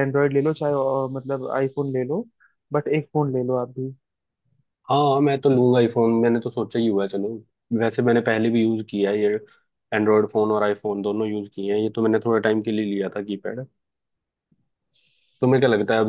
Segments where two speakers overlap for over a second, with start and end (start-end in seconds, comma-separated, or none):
none